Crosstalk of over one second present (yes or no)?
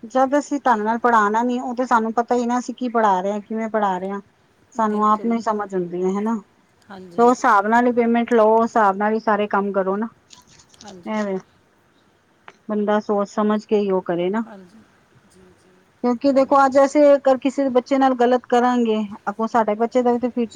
no